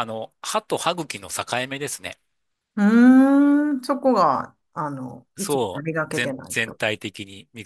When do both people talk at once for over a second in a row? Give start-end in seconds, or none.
5.4-6.8